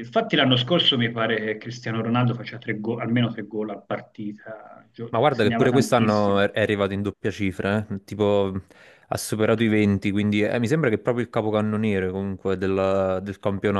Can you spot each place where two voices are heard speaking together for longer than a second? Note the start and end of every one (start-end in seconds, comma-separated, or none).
5.1-6.4